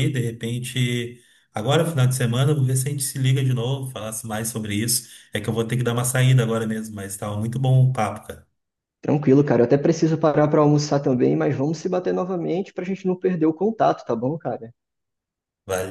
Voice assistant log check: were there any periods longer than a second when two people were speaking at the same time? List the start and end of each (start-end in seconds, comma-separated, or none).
none